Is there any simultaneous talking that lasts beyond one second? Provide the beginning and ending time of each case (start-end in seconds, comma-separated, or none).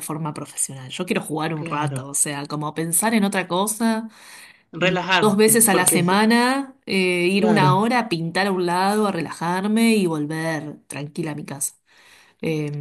4.8-6.2